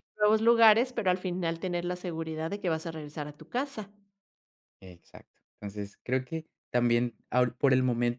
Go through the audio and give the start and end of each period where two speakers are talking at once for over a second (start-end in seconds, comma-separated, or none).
none